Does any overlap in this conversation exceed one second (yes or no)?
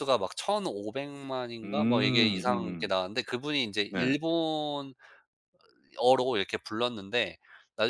yes